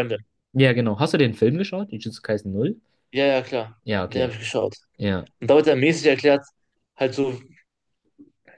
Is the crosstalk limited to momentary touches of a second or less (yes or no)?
yes